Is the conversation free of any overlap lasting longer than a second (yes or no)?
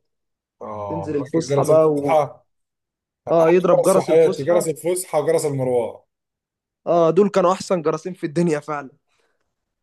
no